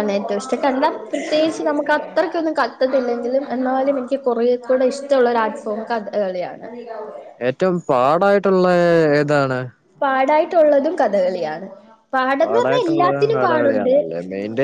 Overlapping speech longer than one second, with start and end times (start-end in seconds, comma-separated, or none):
12.4-13.9